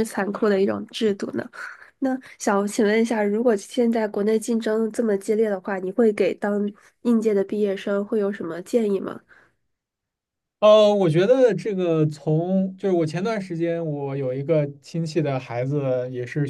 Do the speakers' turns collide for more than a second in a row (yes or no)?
no